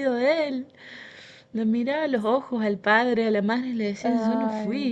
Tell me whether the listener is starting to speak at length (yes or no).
no